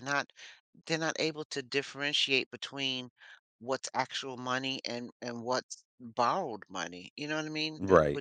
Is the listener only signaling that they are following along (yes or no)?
yes